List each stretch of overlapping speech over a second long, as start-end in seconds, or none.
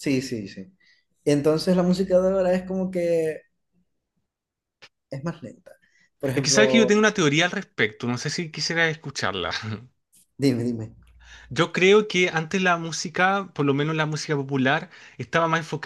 none